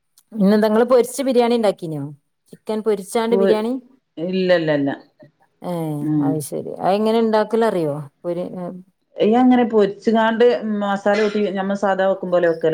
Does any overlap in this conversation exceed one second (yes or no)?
no